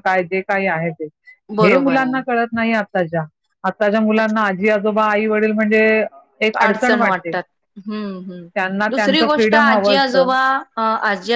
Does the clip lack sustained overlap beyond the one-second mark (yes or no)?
no